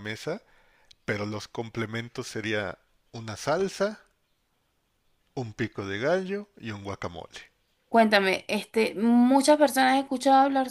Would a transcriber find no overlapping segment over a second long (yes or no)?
yes